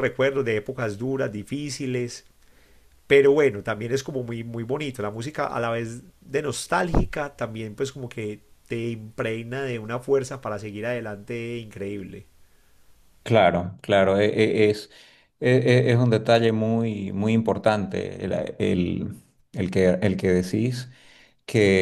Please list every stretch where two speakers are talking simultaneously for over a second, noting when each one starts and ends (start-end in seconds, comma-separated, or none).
none